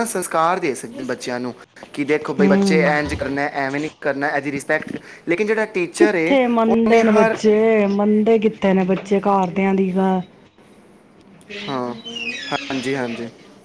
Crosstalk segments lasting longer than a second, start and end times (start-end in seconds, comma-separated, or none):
6.0-7.4